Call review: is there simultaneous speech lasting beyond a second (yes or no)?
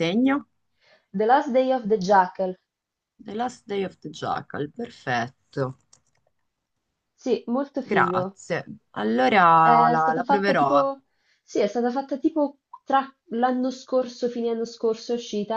yes